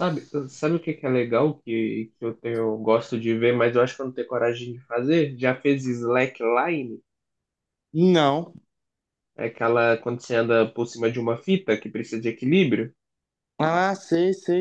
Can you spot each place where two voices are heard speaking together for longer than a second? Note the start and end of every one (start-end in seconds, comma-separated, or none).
none